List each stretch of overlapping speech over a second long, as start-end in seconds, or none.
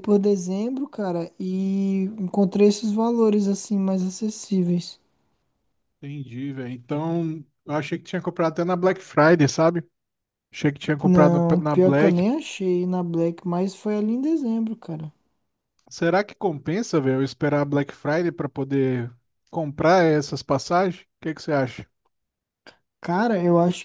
11.0-12.2